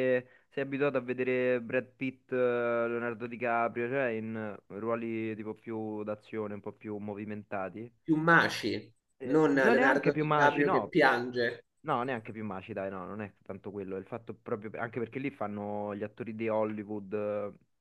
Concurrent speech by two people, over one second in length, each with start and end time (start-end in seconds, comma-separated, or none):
9.2-10.9